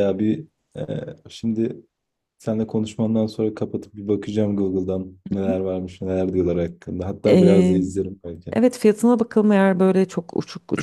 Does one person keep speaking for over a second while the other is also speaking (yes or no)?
no